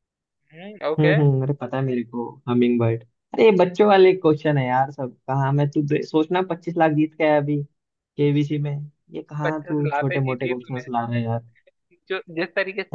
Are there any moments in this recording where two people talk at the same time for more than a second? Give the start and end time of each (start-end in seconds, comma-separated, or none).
9.4-10.9